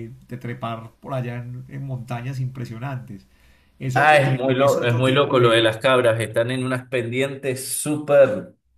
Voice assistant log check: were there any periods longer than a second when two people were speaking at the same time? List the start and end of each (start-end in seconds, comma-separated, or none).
3.9-5.7